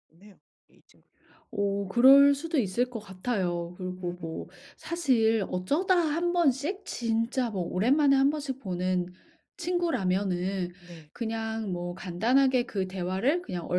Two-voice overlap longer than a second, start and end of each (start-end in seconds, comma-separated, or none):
none